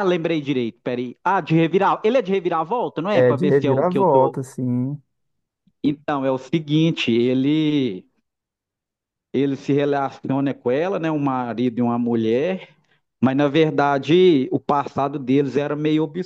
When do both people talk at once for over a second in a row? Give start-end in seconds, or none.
3.1-4.3